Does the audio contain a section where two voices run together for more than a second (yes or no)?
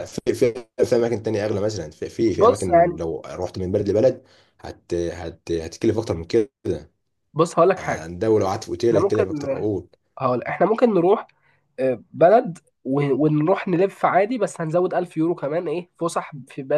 no